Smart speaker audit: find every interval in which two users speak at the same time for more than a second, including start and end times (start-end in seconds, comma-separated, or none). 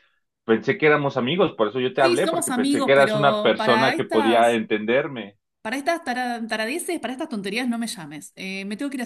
2.0-4.6